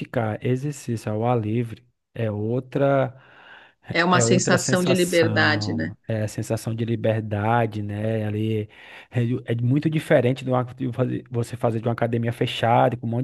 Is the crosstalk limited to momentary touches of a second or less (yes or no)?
no